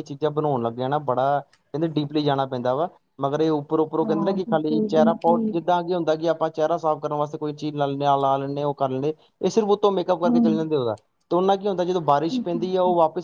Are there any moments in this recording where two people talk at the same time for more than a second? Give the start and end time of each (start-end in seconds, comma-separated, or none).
4.0-5.5